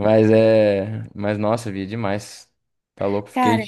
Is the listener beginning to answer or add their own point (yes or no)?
no